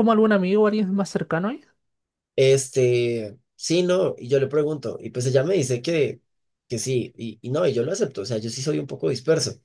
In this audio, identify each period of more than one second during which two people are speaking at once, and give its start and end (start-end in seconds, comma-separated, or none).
none